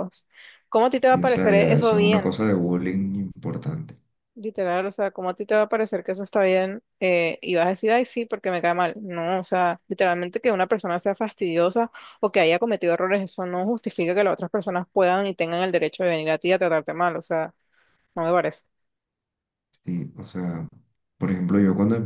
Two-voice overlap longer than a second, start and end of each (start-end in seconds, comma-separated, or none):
1.1-2.3